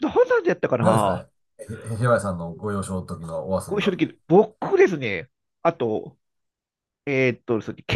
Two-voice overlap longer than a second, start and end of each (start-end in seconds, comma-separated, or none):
none